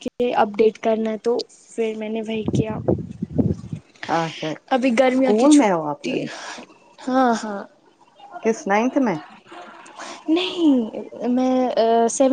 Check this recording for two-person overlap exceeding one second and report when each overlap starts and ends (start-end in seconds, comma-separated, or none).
4.7-6.2